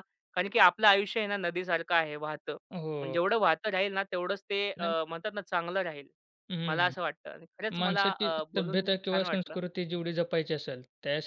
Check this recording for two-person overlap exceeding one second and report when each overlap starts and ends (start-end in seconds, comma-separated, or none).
7.8-9.6